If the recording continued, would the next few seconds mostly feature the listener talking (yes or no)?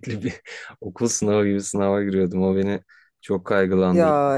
no